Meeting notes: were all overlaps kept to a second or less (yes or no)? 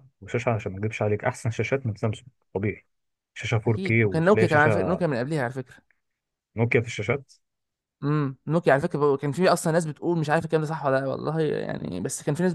no